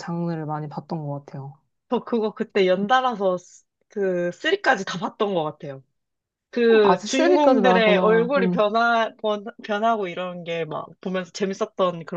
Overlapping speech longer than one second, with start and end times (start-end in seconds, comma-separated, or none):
6.8-8.7